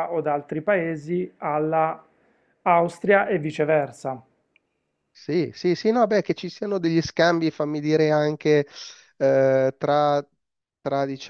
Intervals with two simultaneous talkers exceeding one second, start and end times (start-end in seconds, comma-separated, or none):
none